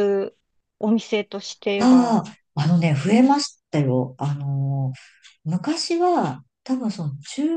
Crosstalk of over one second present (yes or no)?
no